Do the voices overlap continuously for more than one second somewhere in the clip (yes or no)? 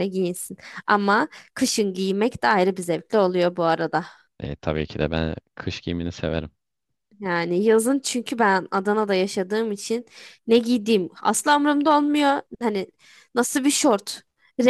no